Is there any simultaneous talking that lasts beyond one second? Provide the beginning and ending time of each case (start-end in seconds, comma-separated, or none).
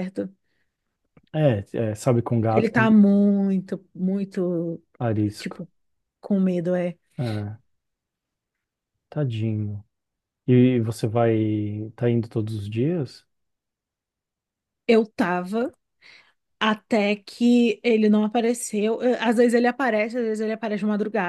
none